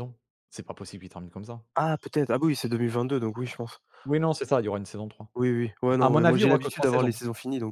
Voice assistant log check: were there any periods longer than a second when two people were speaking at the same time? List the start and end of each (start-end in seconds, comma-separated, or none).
6.0-7.2